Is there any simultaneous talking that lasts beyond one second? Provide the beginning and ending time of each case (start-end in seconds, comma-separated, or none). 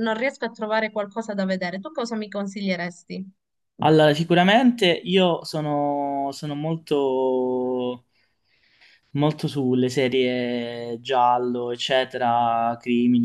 none